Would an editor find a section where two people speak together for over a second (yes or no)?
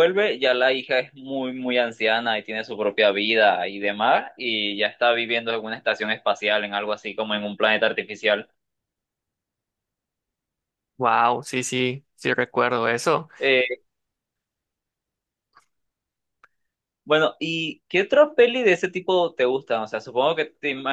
no